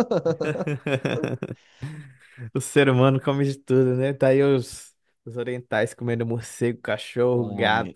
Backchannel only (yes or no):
no